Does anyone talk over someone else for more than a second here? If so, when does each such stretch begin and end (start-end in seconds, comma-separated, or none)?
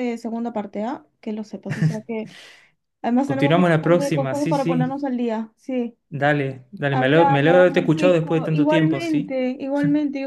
3.2-5.0, 6.9-9.3